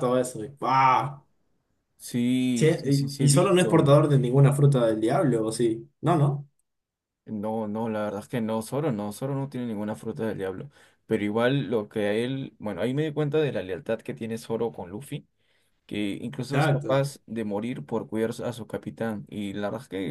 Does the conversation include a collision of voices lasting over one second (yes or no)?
yes